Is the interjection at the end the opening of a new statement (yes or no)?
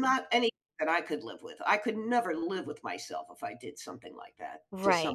yes